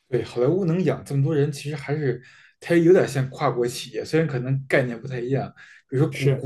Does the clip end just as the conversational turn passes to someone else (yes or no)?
no